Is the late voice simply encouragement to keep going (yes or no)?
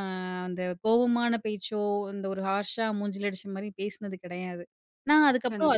yes